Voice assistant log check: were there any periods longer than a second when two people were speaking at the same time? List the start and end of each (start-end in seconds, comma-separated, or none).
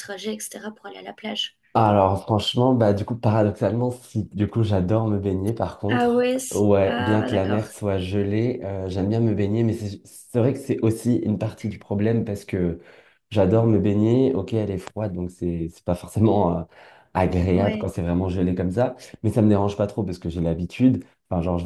5.9-7.6